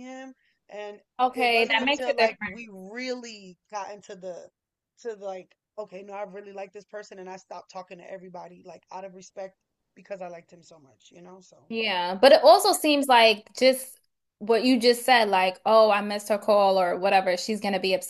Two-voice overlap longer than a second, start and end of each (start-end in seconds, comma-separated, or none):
1.2-2.7